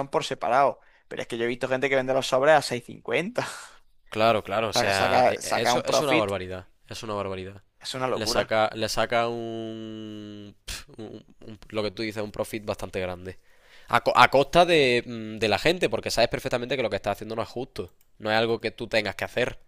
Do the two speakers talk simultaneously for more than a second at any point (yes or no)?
yes